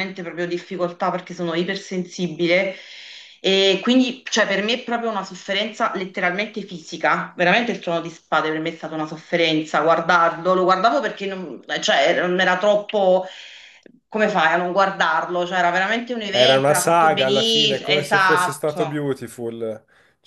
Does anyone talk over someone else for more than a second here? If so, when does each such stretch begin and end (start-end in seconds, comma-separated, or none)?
16.3-19.0